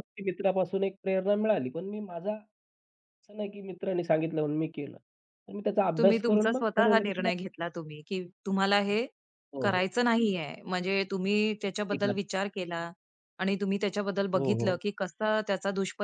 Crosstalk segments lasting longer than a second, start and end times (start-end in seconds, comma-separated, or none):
6.0-7.4